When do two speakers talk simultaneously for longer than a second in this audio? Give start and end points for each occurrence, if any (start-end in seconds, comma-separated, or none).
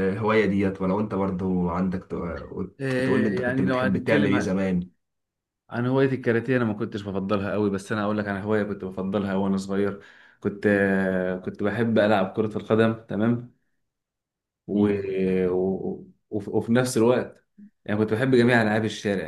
3.0-4.3